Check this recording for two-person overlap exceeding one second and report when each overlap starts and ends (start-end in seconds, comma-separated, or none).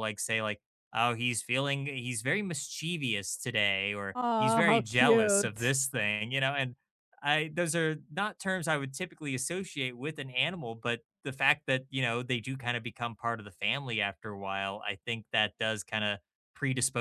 4.1-5.8